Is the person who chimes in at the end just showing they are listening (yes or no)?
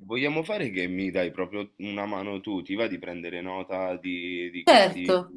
no